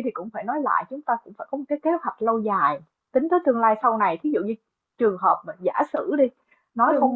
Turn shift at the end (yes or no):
no